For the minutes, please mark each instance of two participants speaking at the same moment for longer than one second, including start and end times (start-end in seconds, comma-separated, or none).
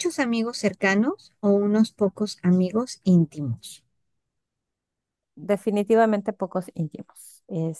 none